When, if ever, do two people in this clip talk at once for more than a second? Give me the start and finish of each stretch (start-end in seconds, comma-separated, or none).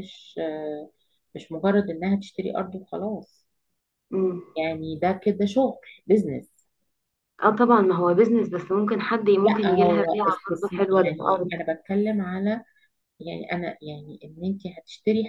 9.4-11.5